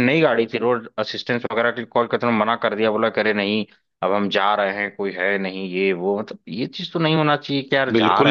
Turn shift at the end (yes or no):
yes